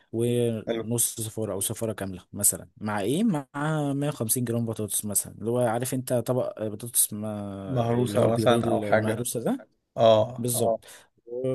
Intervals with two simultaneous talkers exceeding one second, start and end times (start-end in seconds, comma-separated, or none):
7.7-9.2